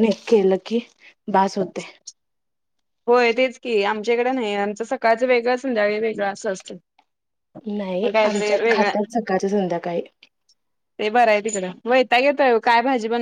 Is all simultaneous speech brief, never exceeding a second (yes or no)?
yes